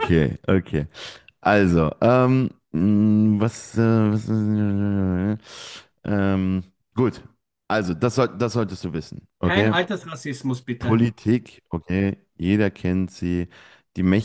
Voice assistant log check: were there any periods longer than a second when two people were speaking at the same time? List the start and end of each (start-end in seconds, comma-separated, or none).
none